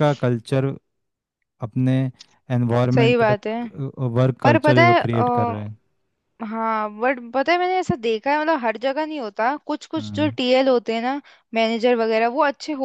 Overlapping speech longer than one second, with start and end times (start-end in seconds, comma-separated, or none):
4.4-5.8